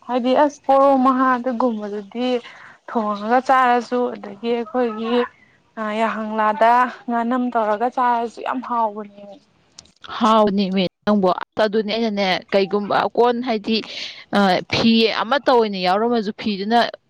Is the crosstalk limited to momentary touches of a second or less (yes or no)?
yes